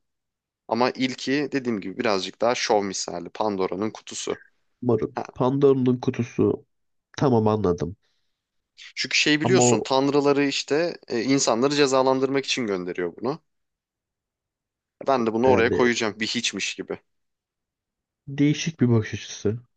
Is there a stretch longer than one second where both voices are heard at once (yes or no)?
no